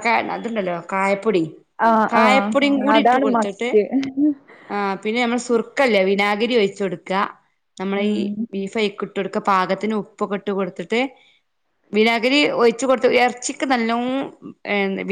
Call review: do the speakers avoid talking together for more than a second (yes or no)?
no